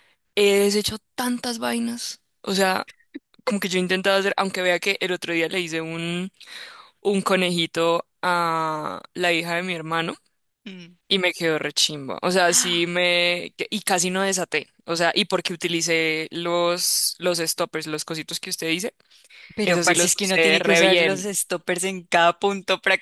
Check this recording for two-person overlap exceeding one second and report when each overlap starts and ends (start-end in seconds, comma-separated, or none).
19.6-21.3